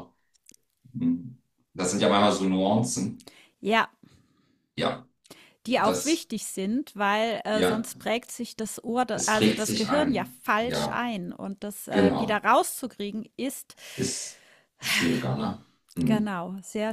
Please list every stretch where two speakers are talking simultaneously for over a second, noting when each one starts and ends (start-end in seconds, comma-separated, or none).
9.1-11.0